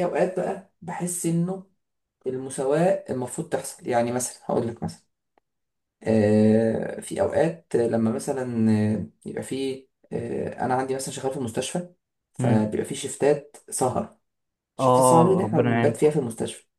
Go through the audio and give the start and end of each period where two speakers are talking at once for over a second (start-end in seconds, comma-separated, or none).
14.8-16.1